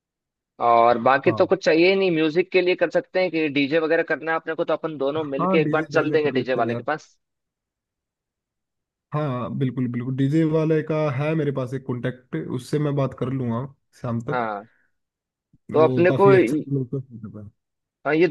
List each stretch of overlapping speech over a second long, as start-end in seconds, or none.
5.2-6.9